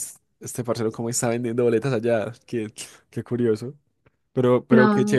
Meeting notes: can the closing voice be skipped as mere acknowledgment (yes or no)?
yes